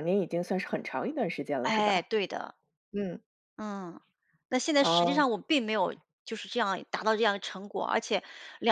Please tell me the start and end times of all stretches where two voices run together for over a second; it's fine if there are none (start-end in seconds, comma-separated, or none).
none